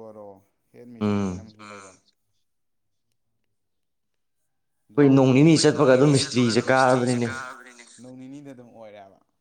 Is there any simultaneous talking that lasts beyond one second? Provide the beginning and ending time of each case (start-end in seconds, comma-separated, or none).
5.0-7.3